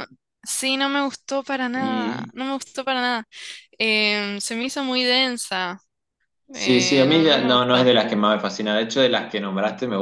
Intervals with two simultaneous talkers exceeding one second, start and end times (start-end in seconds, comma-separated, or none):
6.5-7.9